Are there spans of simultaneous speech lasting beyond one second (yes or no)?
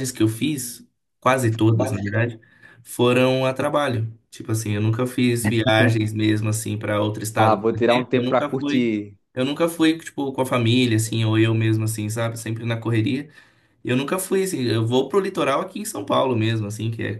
yes